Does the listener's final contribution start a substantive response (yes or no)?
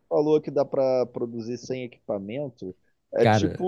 no